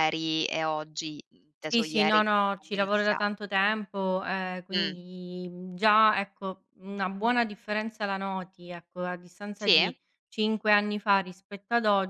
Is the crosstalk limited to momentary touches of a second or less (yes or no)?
no